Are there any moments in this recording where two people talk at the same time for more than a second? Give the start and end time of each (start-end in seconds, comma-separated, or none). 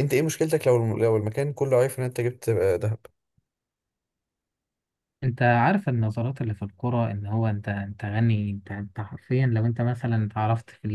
none